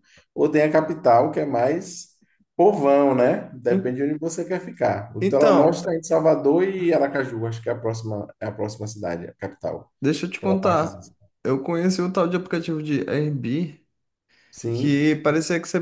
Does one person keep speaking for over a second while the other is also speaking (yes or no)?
no